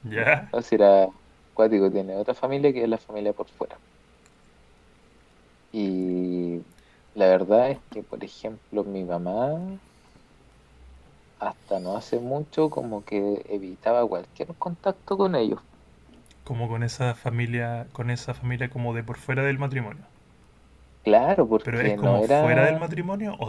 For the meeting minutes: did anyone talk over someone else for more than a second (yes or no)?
yes